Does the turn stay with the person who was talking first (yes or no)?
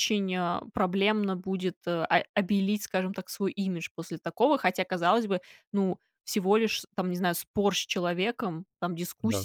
yes